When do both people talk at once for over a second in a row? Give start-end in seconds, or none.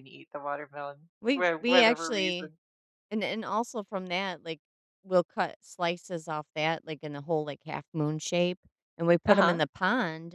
1.2-2.5